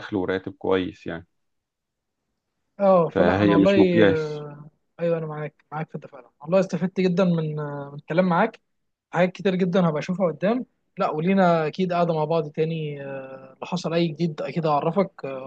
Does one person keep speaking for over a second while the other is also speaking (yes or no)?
yes